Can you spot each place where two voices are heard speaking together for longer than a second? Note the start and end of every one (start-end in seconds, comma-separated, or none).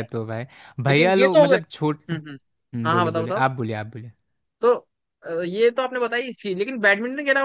0.9-2.1